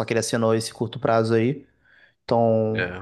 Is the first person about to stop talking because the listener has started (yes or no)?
yes